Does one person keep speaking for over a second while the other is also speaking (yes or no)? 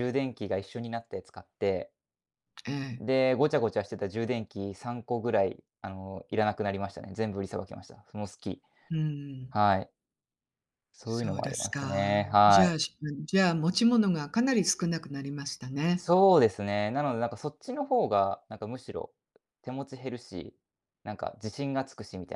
yes